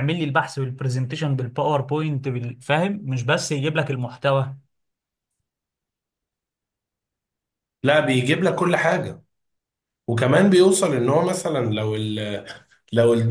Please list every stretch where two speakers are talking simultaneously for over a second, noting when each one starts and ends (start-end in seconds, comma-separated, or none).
none